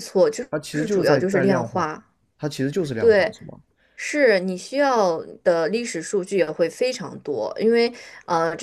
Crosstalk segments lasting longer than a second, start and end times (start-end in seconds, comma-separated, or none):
0.5-1.9